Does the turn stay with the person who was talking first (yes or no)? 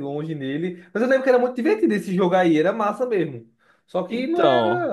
yes